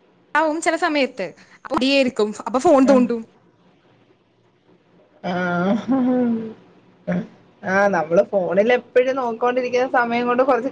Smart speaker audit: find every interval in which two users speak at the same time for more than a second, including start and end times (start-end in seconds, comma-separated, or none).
none